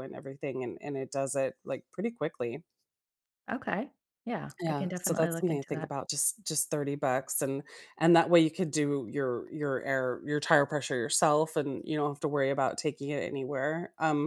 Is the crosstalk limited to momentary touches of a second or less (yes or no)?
no